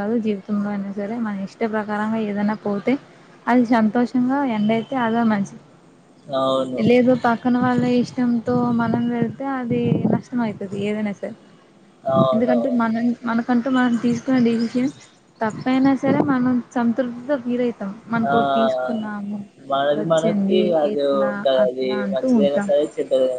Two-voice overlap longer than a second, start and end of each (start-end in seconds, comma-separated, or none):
20.0-22.7